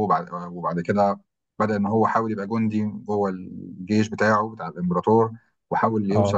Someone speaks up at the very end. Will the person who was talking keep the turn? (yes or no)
yes